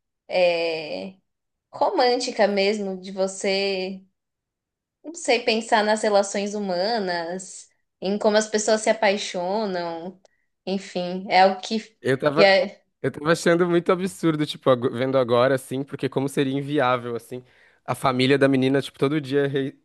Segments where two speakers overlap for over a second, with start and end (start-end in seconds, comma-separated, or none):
none